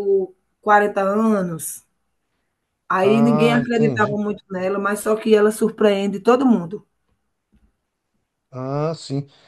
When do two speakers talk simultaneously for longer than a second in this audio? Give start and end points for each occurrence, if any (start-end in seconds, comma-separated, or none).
3.0-4.2